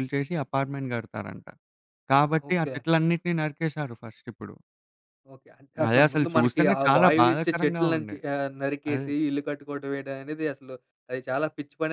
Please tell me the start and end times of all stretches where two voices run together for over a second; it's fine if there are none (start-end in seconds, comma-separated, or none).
5.9-8.2